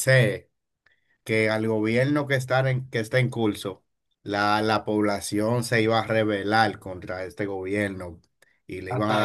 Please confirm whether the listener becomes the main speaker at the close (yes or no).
no